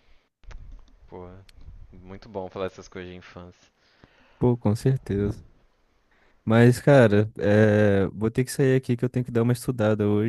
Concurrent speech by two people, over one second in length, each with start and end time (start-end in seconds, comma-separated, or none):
none